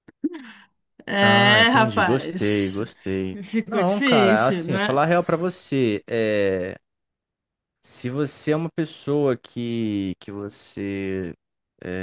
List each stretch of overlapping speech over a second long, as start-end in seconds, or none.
1.2-2.8, 3.4-5.0